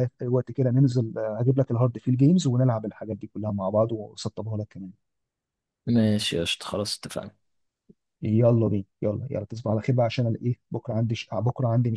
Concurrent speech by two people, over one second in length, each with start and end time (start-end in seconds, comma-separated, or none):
none